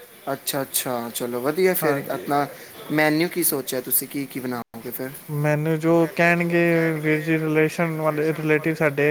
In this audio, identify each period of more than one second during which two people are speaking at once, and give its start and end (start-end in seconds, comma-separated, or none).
none